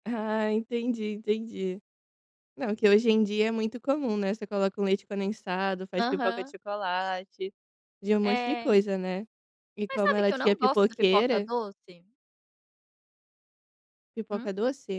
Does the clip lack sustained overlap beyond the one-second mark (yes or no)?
no